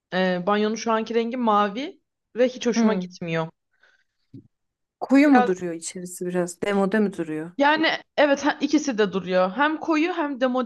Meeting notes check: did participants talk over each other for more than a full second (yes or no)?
no